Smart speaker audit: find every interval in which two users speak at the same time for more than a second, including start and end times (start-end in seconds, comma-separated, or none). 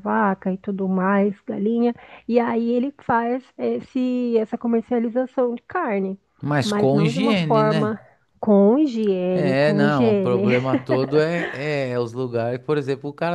6.6-8.0, 9.3-10.6